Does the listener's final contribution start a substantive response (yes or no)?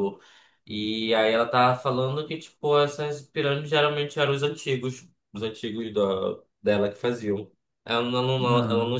no